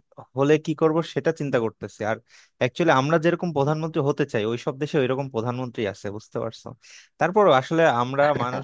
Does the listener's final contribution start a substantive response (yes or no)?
no